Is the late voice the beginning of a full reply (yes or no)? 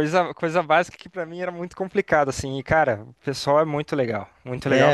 yes